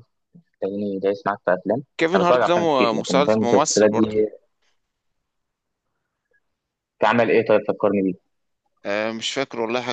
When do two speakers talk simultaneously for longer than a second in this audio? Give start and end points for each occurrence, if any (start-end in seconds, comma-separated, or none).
2.0-4.2